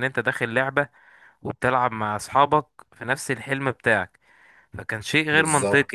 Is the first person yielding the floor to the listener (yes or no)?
no